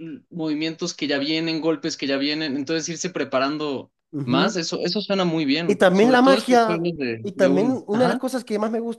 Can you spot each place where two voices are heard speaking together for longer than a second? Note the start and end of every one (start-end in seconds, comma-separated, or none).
5.7-8.2